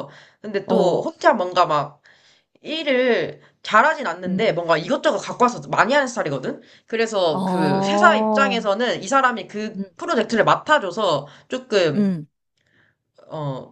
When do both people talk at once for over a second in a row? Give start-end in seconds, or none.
7.3-8.6